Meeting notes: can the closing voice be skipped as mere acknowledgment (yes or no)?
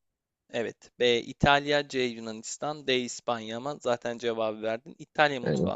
yes